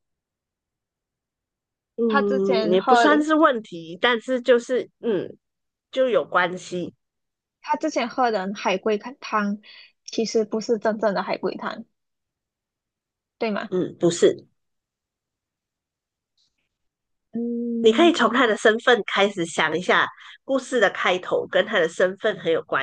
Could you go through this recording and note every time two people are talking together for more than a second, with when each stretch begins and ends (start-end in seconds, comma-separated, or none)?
2.1-3.3